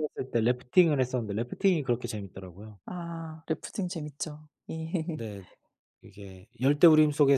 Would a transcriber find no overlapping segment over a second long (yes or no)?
yes